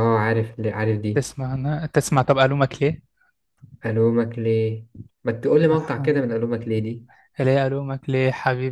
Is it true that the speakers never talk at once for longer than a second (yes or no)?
yes